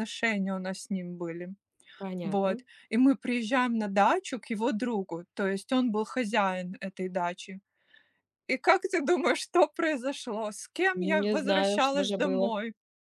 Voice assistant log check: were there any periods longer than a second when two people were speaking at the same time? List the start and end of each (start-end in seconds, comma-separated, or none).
10.9-12.5